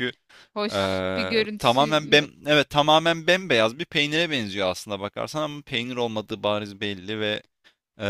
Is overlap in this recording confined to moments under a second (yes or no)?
no